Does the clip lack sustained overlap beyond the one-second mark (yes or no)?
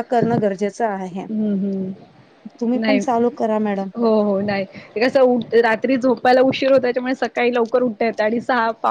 yes